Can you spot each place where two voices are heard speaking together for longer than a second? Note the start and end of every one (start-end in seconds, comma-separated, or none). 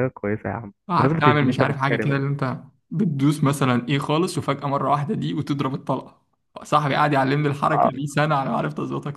0.9-2.2